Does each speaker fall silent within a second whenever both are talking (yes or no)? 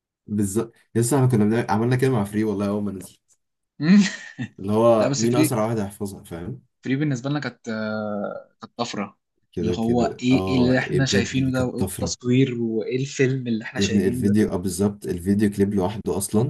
no